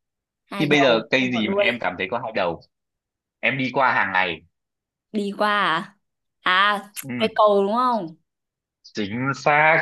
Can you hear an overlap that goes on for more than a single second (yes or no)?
yes